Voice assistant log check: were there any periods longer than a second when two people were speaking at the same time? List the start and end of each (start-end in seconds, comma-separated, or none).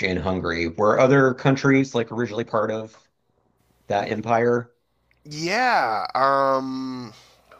none